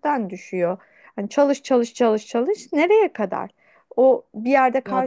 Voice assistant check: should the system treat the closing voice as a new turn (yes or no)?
no